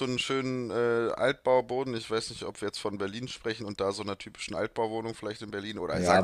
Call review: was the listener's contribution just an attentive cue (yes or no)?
no